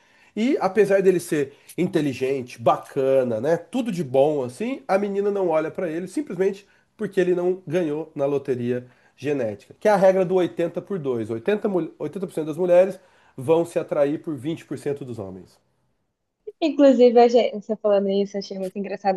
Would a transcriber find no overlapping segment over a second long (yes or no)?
yes